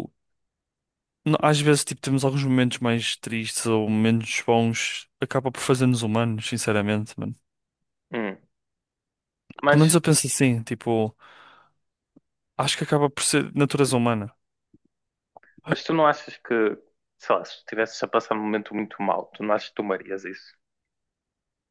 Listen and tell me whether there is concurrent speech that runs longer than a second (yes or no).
no